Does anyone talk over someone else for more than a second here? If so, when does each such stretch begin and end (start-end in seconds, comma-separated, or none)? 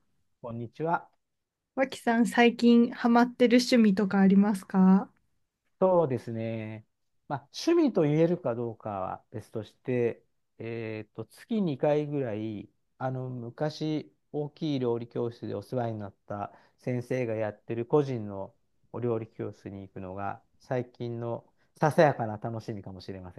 none